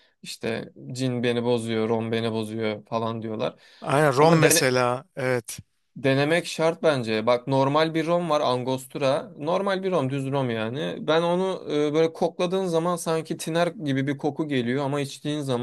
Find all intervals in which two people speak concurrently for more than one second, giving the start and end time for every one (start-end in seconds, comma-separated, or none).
none